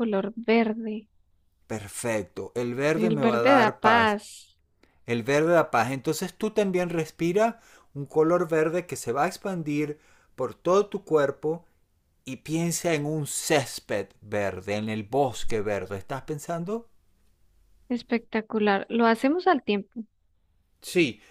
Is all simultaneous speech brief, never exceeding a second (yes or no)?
no